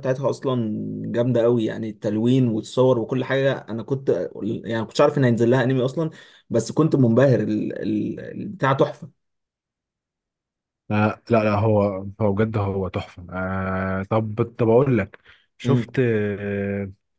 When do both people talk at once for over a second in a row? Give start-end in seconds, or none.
none